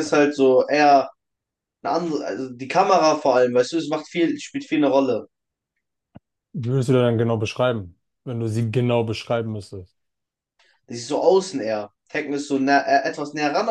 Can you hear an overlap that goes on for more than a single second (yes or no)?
no